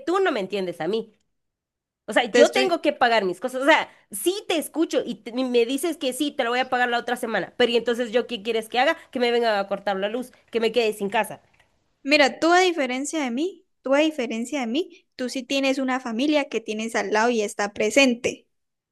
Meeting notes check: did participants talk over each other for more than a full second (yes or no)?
no